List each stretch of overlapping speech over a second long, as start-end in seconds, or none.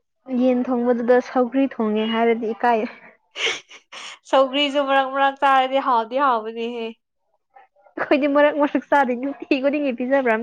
none